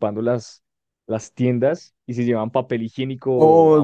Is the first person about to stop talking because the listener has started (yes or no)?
yes